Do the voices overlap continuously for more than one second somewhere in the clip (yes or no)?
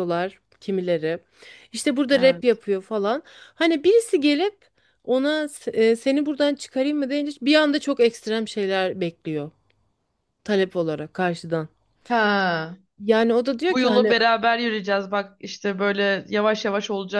no